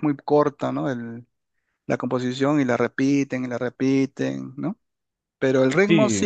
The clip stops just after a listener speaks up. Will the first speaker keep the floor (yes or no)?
yes